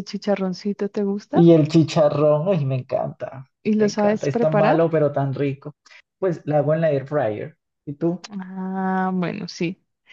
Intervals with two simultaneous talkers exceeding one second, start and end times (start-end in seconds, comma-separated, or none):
3.6-4.9